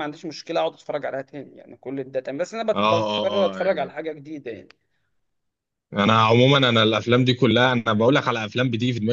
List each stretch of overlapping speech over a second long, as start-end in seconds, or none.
2.7-3.9